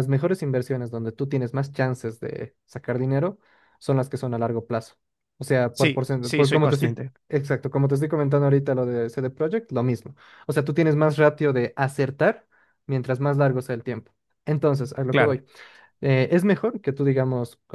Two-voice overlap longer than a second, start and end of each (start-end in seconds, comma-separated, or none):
5.7-7.1